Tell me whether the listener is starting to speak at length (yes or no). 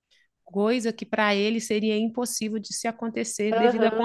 yes